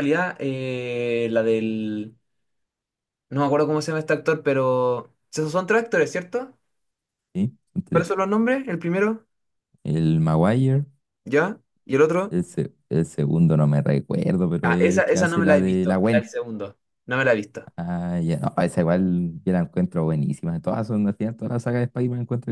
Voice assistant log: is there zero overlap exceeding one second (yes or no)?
no